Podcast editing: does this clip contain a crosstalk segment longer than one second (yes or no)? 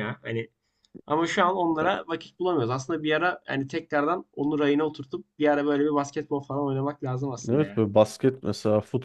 no